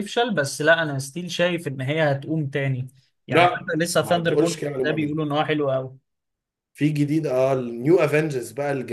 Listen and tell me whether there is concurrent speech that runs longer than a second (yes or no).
yes